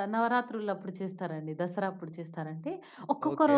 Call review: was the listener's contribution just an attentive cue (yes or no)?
yes